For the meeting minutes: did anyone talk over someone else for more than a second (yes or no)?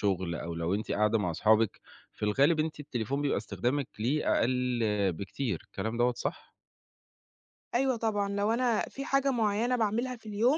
no